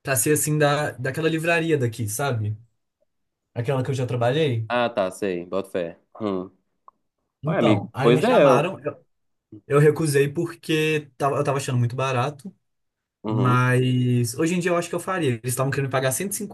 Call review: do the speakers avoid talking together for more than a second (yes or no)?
no